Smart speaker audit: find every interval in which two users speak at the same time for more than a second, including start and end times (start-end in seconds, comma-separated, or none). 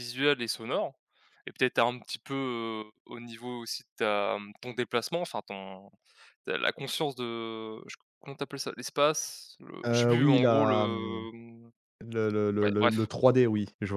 9.8-11.3